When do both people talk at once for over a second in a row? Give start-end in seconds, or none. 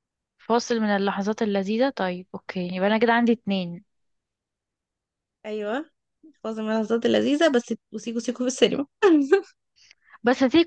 none